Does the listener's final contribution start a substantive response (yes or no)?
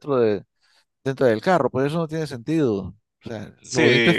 yes